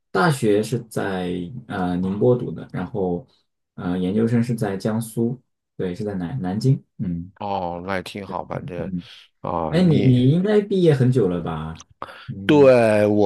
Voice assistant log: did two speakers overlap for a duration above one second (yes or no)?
no